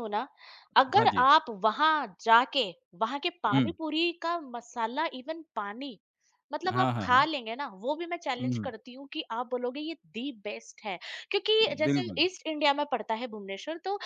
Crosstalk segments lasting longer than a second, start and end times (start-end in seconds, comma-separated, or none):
none